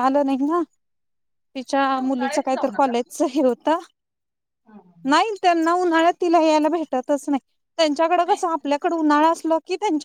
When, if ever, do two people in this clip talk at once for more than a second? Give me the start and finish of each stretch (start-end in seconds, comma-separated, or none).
1.7-2.9